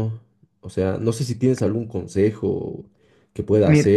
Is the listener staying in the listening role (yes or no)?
yes